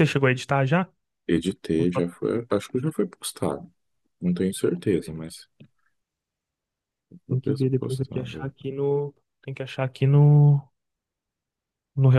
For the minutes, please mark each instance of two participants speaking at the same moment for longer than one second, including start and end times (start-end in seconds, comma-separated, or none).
7.3-8.5